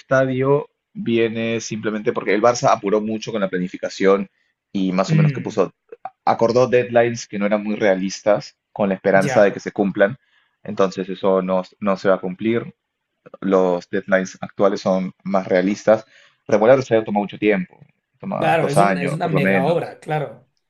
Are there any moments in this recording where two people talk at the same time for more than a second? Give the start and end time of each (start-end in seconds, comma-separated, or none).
18.4-19.9